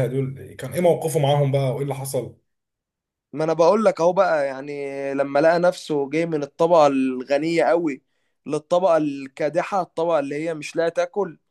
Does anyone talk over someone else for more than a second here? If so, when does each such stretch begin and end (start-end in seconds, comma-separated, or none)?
none